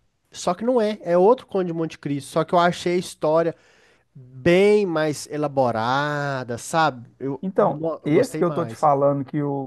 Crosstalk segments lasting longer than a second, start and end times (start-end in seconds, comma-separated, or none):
7.4-8.9